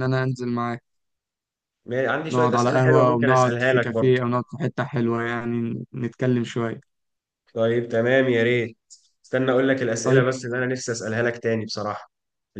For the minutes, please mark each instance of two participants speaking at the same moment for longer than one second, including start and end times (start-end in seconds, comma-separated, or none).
2.3-4.2